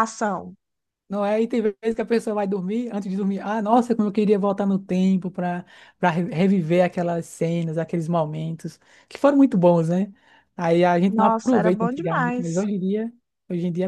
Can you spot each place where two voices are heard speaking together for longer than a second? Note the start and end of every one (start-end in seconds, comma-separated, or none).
11.0-12.7